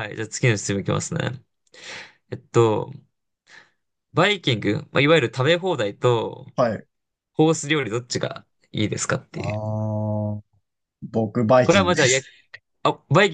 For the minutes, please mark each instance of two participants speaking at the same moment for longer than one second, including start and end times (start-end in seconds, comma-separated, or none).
none